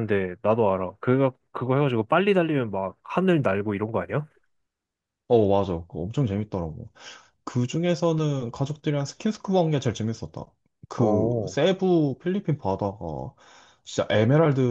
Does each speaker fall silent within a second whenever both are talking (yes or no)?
yes